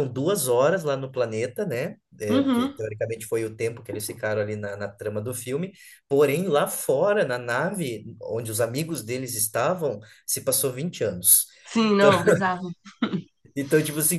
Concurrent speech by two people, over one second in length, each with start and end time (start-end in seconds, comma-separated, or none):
none